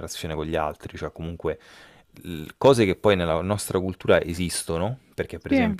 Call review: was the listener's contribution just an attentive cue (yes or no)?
yes